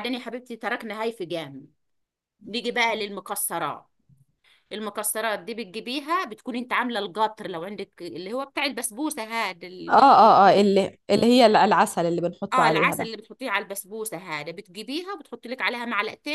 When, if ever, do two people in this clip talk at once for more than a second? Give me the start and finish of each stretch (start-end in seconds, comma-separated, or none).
none